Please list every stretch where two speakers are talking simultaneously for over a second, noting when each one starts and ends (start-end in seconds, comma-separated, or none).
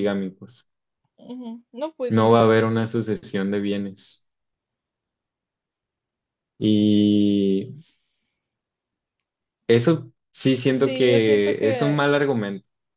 10.7-12.0